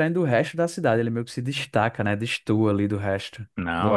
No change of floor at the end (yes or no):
no